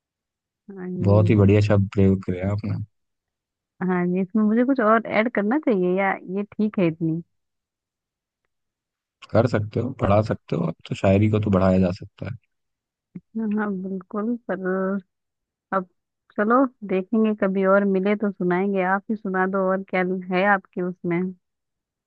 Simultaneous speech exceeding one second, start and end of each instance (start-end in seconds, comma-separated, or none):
none